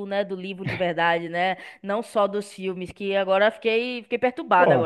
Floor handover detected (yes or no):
yes